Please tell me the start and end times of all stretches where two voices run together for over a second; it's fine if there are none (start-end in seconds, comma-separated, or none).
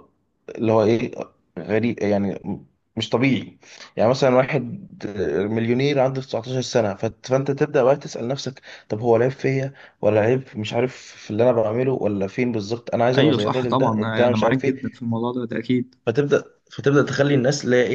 13.2-15.0